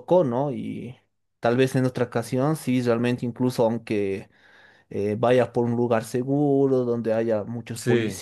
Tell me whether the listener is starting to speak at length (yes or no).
no